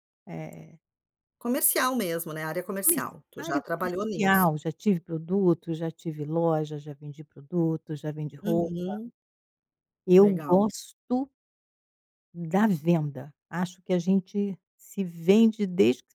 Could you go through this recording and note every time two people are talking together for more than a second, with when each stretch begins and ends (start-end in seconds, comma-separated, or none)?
2.8-4.5